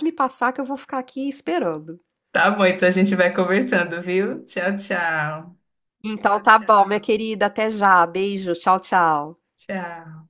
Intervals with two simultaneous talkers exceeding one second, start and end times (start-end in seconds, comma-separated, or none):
none